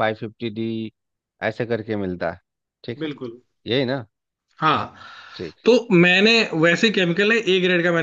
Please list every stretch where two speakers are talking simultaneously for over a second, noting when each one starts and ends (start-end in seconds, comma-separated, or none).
none